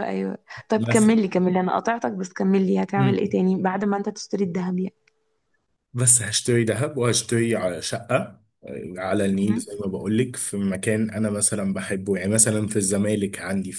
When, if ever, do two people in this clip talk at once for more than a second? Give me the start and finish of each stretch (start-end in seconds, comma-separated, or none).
none